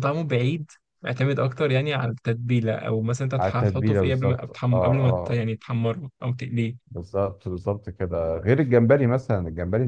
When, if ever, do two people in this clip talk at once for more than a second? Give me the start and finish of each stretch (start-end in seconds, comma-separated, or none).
3.4-5.4